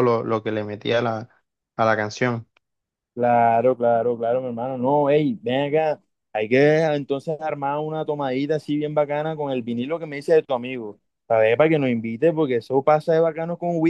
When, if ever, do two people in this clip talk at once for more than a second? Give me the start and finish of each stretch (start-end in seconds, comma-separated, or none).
none